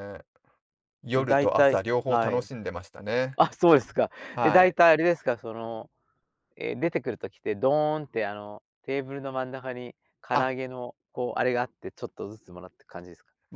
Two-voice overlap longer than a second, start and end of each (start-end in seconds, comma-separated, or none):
1.1-2.5